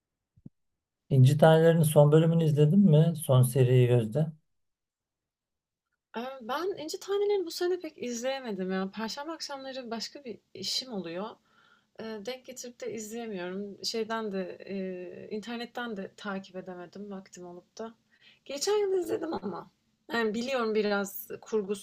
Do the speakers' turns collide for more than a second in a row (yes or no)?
no